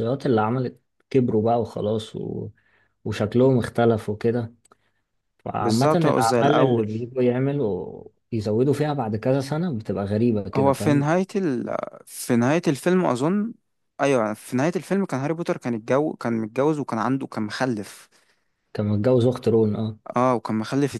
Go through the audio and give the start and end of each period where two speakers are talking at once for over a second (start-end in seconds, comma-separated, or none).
5.6-6.9